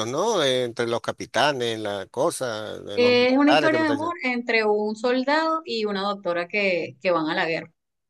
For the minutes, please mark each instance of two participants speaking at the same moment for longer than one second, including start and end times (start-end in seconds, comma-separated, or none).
3.0-4.2